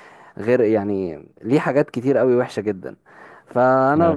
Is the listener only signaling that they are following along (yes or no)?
yes